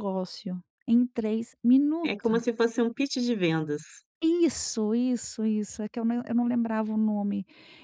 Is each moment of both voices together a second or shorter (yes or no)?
yes